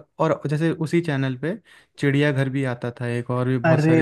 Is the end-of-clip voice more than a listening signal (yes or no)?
yes